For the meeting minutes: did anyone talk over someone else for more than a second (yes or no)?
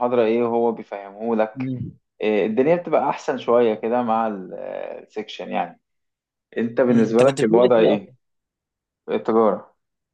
yes